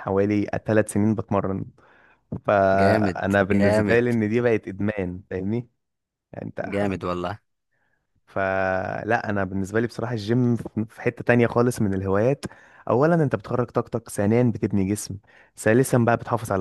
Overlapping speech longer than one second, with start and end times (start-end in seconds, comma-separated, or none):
2.7-4.0